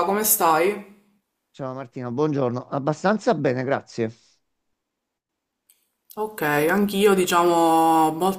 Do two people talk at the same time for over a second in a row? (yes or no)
no